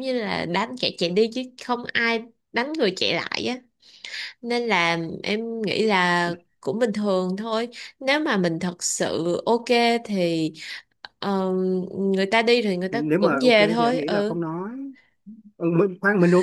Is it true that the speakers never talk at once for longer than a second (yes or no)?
no